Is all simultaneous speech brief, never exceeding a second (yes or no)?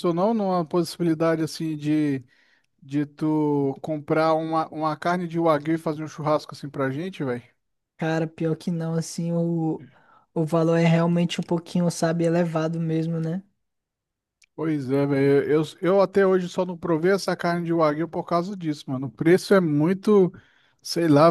yes